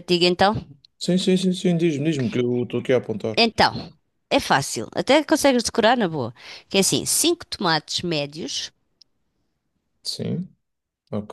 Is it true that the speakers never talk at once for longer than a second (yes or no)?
yes